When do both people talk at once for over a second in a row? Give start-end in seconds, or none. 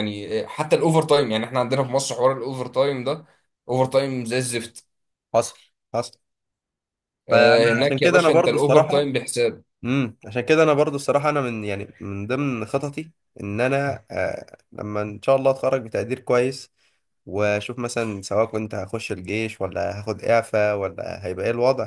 7.3-9.1